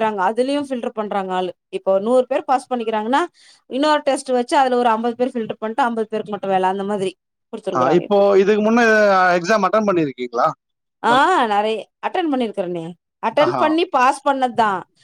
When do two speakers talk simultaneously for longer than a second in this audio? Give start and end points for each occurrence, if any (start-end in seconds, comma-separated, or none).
none